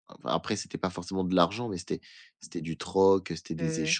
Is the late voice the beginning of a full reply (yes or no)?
no